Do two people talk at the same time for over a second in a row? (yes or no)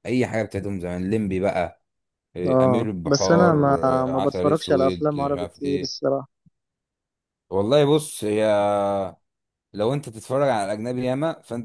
yes